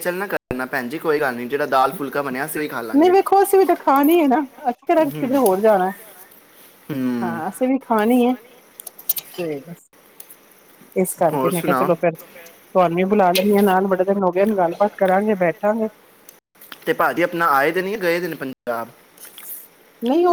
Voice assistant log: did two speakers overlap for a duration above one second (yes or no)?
no